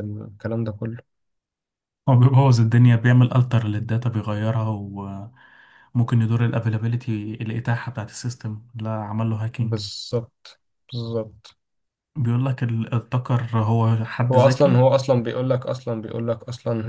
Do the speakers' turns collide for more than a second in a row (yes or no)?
no